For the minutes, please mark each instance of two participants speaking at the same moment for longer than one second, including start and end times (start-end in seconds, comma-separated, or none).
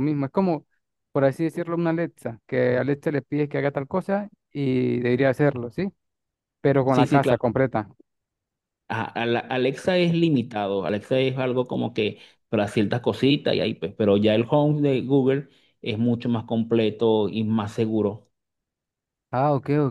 none